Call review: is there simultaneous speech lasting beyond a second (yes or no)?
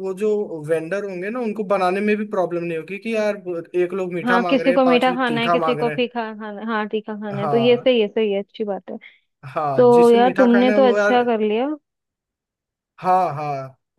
yes